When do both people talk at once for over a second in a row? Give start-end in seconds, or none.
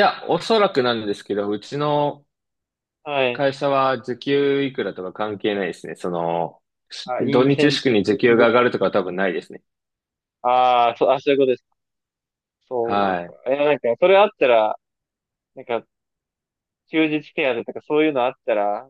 7.0-8.5